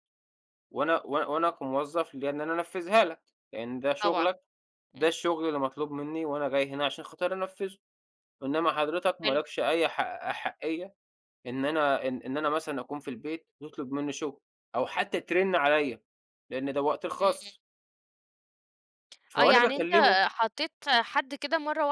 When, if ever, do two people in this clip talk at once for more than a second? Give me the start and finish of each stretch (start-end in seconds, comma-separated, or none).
none